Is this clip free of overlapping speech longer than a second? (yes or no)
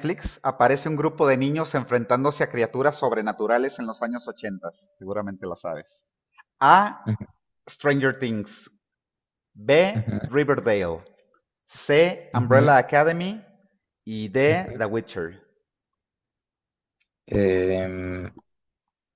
yes